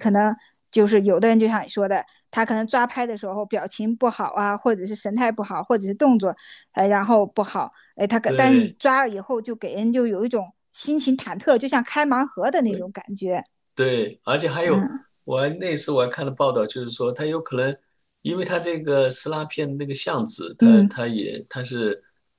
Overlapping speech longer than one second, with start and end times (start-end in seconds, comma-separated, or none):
none